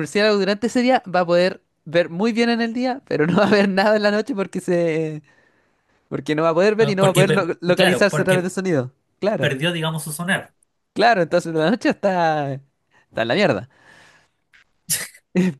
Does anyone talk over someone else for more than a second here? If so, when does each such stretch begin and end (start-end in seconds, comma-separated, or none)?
6.8-8.5